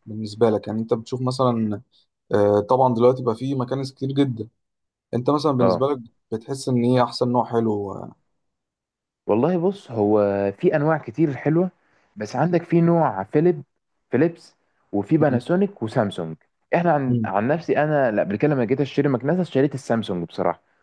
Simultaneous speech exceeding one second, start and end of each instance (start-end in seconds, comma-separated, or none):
none